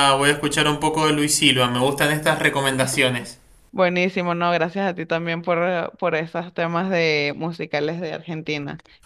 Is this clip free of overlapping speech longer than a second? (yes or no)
yes